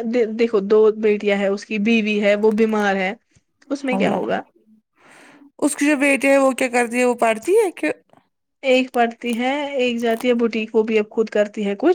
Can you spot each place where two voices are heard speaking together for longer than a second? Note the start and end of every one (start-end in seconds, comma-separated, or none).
none